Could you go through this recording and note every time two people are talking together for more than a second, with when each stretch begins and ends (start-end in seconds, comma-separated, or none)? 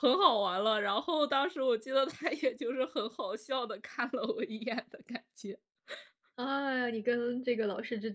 none